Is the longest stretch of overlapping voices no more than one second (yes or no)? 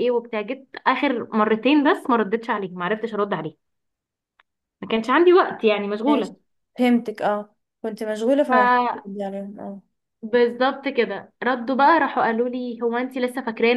yes